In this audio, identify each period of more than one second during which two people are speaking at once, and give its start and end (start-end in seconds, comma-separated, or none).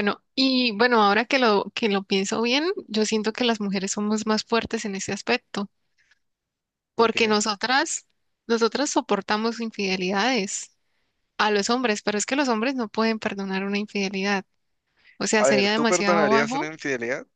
15.4-16.7